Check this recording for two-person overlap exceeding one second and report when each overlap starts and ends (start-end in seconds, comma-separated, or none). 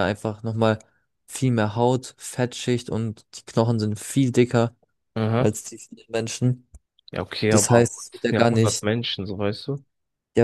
7.5-8.8